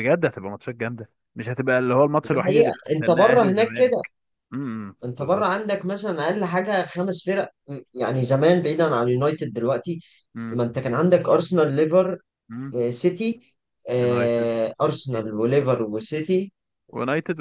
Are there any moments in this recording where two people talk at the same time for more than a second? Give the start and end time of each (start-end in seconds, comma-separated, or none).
2.3-4.0, 14.0-15.3